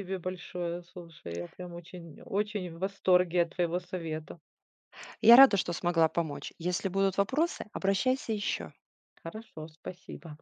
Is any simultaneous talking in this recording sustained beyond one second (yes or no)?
no